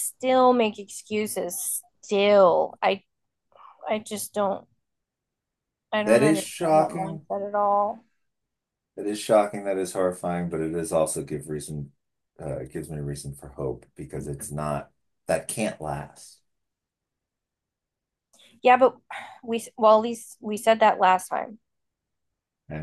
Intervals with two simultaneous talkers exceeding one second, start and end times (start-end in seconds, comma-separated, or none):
6.1-7.3